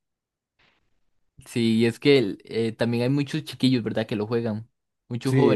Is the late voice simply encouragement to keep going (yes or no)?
no